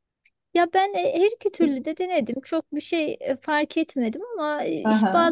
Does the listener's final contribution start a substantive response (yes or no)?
no